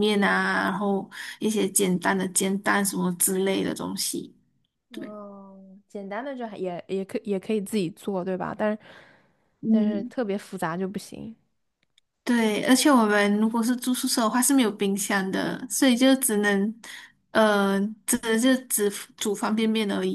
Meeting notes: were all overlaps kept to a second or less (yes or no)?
yes